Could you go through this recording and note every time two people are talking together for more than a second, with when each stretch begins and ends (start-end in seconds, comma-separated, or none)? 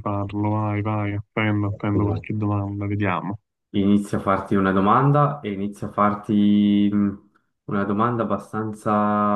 none